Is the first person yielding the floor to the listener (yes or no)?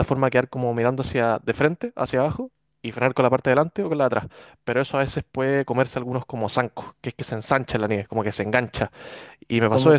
yes